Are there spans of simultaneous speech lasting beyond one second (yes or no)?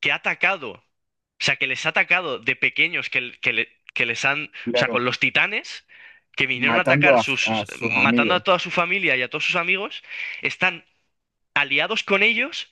yes